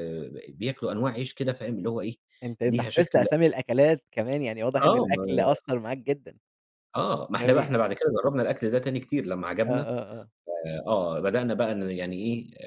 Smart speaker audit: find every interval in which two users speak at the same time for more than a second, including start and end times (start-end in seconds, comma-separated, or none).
none